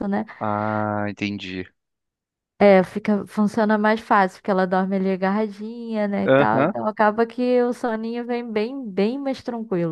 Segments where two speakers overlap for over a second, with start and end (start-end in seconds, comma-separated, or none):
none